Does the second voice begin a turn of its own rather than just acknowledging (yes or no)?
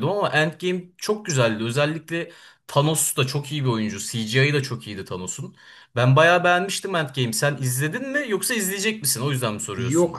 yes